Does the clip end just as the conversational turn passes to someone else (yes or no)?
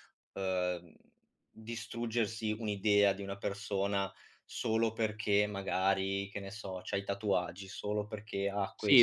yes